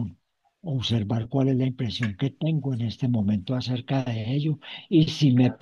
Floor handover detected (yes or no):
no